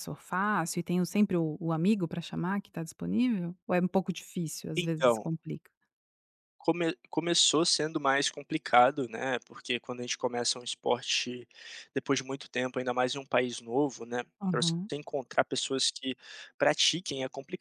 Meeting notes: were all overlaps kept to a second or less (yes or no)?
yes